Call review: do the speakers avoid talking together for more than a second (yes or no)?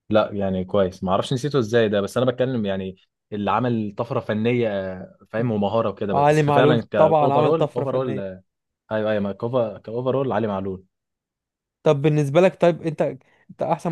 no